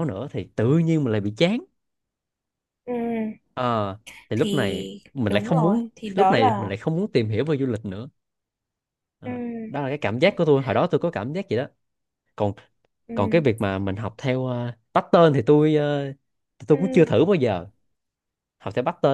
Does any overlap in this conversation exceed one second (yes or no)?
yes